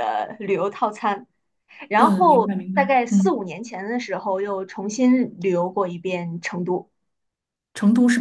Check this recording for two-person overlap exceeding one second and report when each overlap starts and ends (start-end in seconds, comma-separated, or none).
2.0-3.4